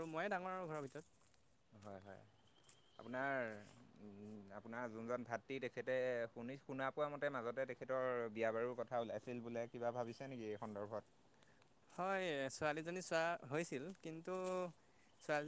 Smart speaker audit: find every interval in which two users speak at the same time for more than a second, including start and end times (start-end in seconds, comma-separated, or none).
none